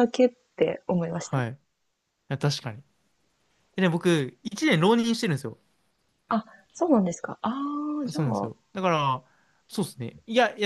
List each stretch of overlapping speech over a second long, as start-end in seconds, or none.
none